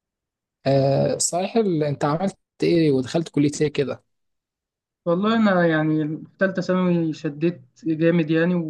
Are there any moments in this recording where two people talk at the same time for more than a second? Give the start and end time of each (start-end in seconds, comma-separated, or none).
none